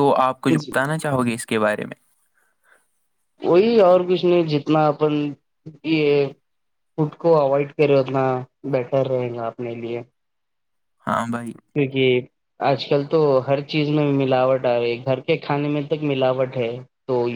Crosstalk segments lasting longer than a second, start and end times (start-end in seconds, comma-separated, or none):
none